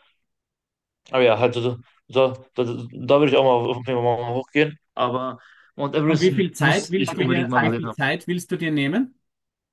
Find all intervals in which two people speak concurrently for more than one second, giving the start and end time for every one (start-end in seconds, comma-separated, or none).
6.1-8.0